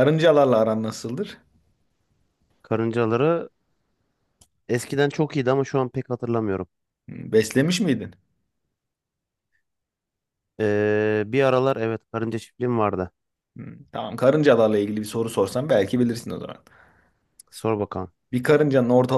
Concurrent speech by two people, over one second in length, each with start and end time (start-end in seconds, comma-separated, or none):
none